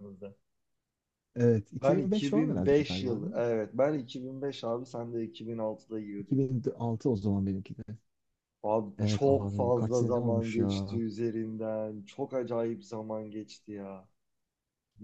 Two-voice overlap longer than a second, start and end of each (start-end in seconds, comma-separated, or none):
1.8-3.4, 9.0-10.9